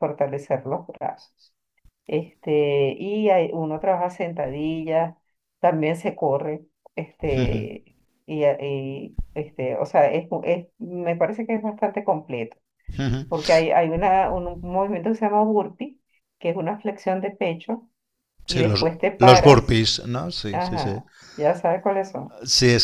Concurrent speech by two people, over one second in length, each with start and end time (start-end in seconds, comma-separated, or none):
18.5-19.8